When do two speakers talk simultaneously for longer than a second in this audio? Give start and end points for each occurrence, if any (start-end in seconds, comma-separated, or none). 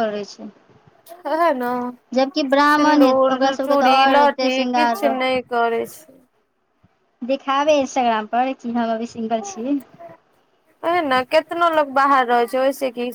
2.7-5.2